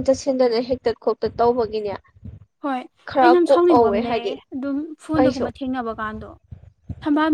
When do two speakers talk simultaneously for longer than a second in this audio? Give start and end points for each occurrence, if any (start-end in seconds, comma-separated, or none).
3.1-4.4